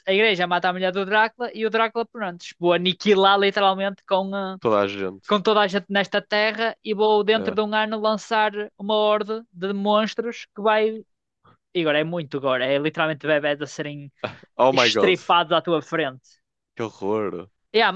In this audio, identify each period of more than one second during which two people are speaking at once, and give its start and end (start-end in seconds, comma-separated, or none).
none